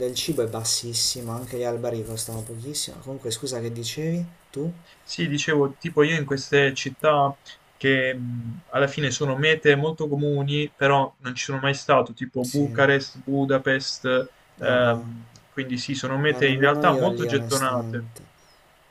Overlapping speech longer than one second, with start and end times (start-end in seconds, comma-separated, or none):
16.3-18.1